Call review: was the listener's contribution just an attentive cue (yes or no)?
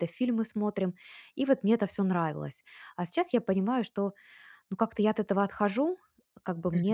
yes